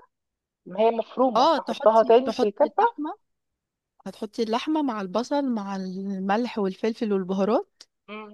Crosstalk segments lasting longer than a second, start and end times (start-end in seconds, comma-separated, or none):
1.4-2.8